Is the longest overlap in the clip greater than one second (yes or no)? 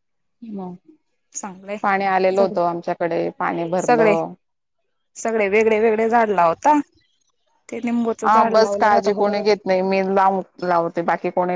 yes